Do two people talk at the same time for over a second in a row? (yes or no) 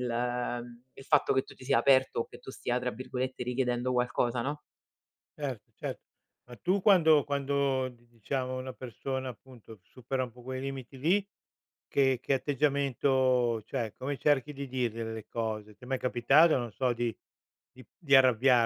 no